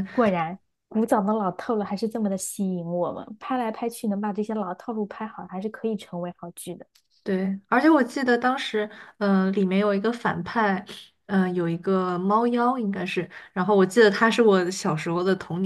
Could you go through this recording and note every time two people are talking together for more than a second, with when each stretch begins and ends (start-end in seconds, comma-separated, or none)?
none